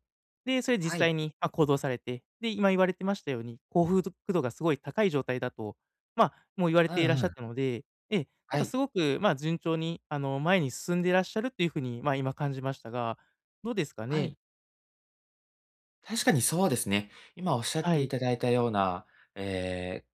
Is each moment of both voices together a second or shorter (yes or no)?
yes